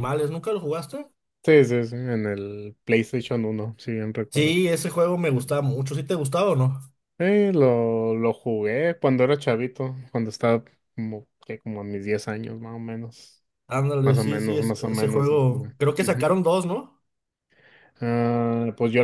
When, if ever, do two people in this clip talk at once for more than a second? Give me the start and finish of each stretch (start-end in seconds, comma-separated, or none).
14.0-16.4